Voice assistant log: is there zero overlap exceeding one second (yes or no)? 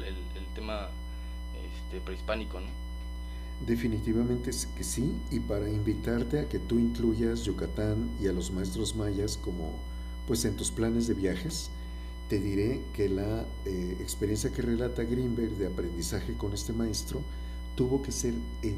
yes